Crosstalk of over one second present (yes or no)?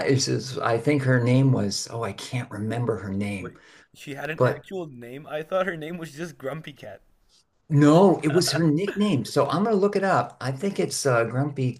no